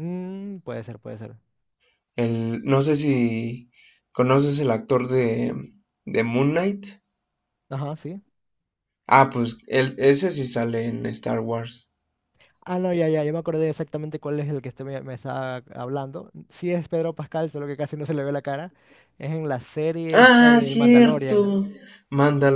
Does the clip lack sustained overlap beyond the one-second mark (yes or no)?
no